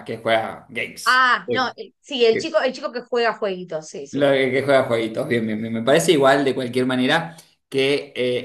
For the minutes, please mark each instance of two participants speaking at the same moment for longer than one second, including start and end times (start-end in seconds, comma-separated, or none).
none